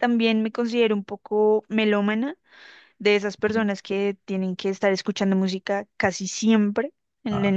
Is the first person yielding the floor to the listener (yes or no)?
no